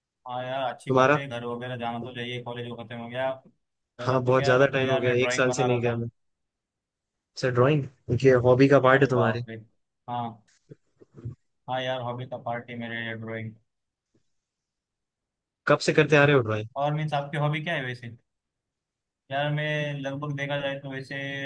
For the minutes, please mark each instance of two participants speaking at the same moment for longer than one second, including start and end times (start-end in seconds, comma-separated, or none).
4.0-5.9